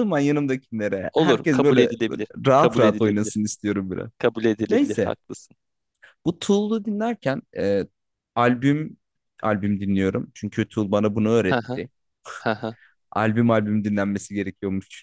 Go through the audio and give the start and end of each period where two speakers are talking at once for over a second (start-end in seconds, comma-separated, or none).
1.1-3.4